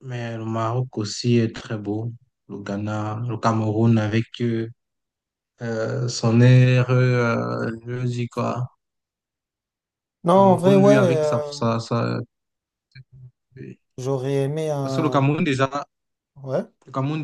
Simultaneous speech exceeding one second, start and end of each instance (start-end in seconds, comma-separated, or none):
10.3-11.5